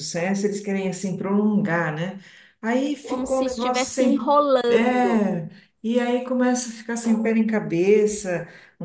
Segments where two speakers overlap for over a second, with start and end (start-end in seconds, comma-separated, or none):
3.1-5.2